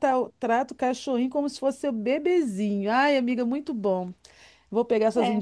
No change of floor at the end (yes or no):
yes